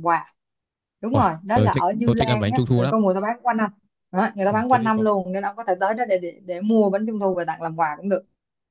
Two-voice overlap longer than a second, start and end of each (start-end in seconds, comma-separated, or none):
1.1-3.0